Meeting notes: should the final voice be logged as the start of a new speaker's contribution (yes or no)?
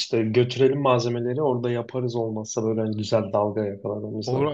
yes